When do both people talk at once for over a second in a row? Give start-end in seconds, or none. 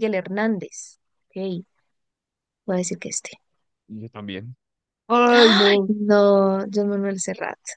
none